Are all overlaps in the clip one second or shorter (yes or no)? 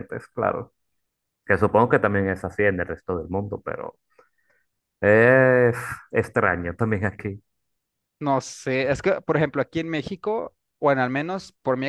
yes